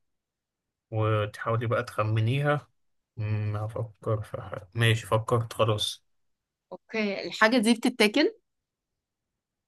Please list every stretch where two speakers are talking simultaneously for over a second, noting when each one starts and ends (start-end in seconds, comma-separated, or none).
none